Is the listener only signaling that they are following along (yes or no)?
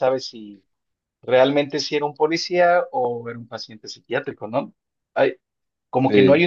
yes